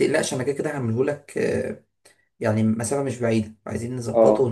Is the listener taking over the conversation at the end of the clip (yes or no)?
yes